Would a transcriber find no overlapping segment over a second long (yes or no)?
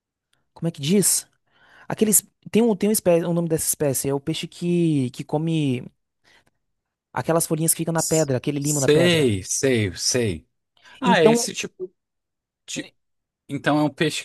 no